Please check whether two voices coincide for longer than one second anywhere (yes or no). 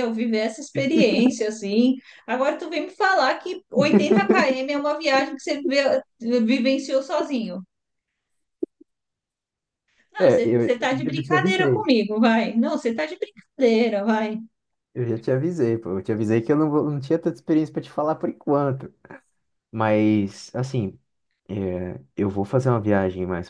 yes